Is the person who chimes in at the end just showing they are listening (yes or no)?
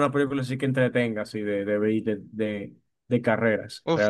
no